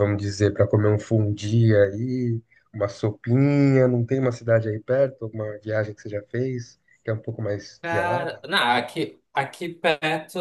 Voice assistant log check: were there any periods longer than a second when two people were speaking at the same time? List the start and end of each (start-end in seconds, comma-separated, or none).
none